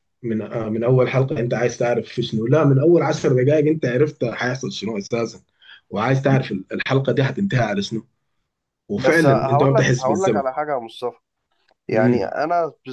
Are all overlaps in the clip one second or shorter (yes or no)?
no